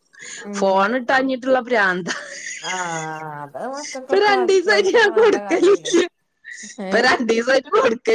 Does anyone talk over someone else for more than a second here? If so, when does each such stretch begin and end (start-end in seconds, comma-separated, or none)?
4.1-5.9